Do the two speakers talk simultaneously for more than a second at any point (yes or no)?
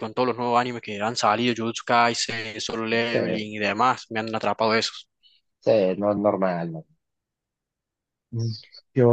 no